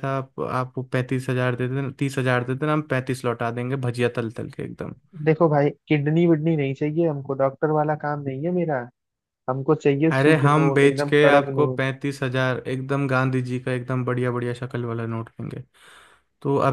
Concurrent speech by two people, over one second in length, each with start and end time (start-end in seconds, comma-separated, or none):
10.1-11.8